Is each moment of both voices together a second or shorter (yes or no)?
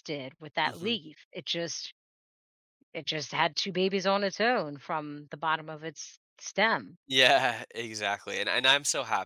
yes